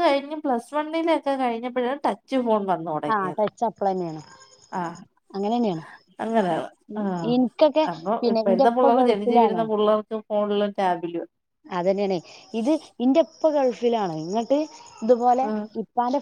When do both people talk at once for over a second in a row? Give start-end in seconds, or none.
none